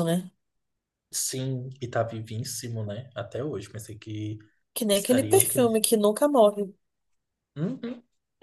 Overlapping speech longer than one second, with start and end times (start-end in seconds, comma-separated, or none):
none